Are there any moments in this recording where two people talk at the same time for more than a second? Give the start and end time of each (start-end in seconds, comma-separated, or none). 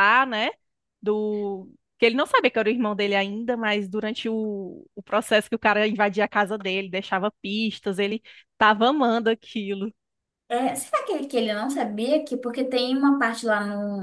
none